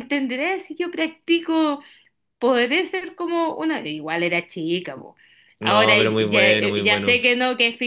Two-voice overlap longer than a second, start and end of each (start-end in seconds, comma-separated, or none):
5.6-7.2